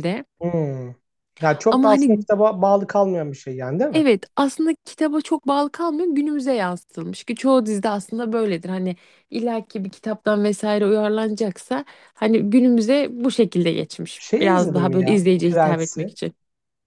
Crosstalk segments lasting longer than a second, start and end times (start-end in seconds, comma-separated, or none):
14.2-16.1